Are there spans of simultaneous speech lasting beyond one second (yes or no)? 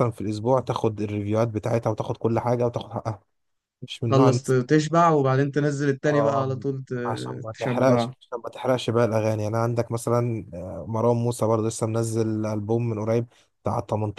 no